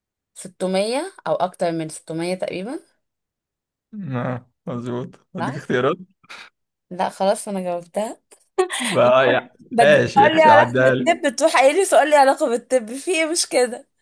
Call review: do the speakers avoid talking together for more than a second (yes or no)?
no